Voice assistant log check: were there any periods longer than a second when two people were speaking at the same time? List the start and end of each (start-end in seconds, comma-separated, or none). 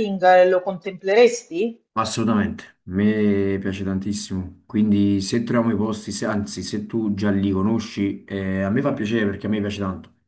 none